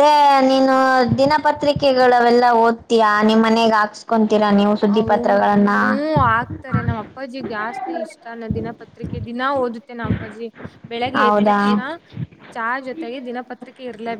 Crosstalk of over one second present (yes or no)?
no